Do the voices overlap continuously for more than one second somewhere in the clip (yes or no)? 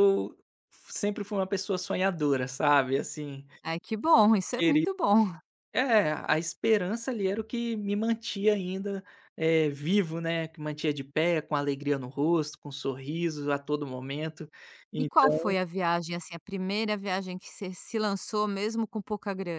no